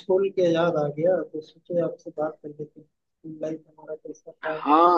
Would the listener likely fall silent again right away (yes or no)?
no